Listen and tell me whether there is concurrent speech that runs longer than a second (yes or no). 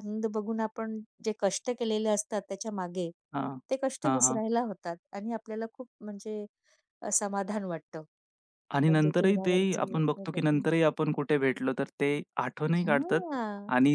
yes